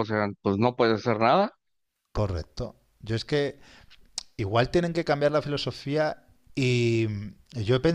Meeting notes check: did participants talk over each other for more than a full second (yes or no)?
no